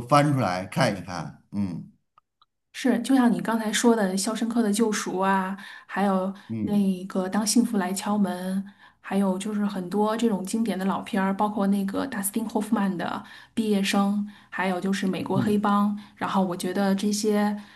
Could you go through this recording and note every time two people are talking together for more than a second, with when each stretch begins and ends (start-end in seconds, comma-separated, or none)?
none